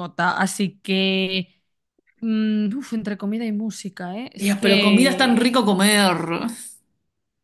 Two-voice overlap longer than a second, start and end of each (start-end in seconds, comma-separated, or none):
4.4-5.6